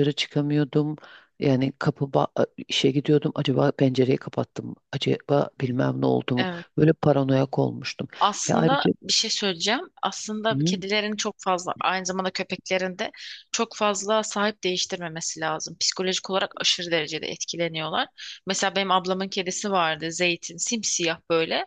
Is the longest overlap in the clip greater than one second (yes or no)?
no